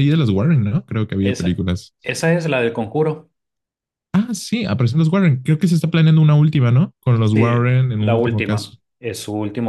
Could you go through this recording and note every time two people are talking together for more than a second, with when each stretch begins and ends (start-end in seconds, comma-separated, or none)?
7.3-8.8